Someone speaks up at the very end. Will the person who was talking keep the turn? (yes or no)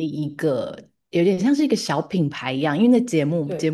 yes